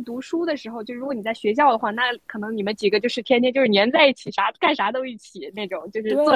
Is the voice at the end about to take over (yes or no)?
yes